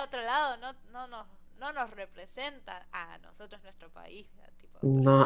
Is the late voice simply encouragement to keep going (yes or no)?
no